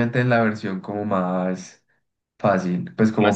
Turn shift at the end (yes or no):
no